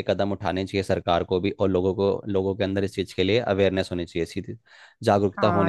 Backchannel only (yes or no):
no